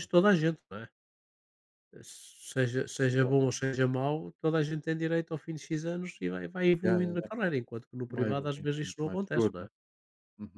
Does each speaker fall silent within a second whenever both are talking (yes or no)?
no